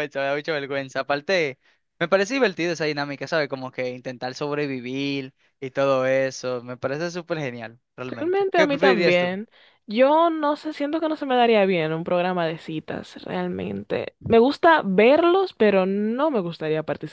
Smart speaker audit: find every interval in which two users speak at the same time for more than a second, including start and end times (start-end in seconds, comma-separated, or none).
8.1-9.3